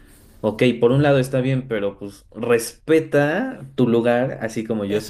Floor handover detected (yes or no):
yes